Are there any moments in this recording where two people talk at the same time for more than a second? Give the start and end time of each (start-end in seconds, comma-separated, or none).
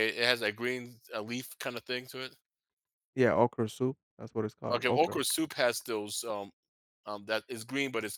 none